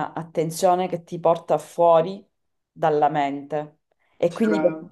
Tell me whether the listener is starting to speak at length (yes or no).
no